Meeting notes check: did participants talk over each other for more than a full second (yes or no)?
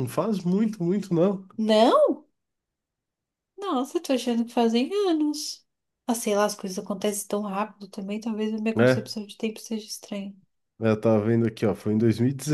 no